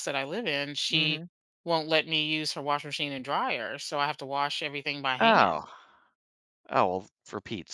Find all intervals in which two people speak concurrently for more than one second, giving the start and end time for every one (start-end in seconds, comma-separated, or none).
none